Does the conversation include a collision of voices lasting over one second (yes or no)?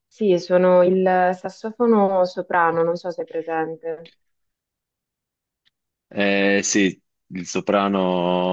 no